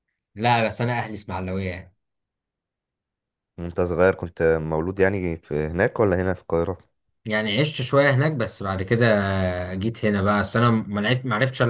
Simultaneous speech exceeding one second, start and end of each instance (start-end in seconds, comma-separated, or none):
none